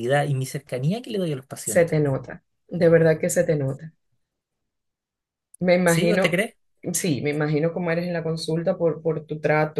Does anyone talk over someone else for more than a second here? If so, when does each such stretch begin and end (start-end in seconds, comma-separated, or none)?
none